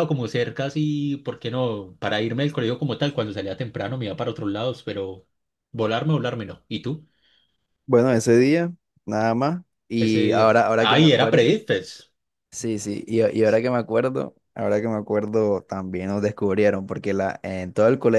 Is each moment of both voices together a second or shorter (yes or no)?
no